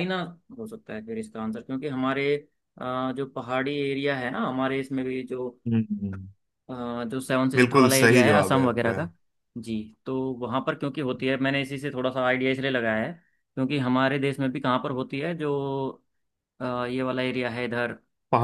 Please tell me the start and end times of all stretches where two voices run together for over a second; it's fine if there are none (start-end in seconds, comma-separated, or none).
7.5-9.0